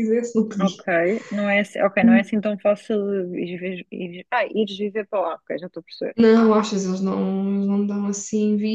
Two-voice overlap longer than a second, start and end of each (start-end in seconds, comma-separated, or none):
none